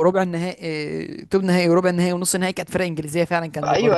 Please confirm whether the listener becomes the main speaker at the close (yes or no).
yes